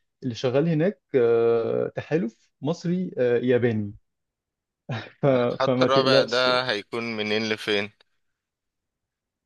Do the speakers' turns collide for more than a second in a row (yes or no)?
yes